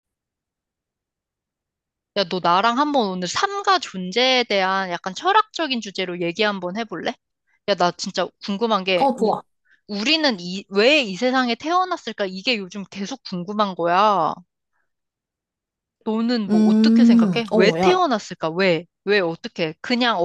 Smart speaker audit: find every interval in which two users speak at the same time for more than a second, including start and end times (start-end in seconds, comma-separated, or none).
16.5-18.0